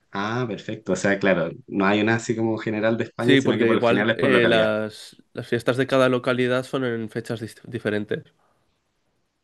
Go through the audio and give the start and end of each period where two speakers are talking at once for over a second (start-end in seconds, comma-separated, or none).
3.2-4.7